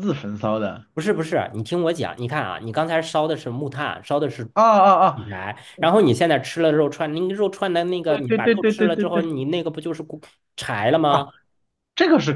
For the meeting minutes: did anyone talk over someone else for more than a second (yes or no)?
yes